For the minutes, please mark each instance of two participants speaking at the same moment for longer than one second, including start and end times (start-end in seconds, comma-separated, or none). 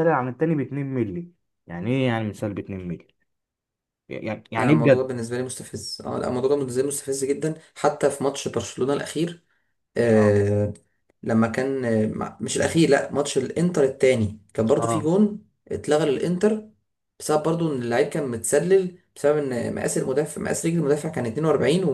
none